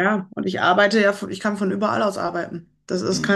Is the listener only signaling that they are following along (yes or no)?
yes